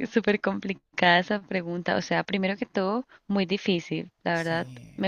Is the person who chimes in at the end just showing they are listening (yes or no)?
yes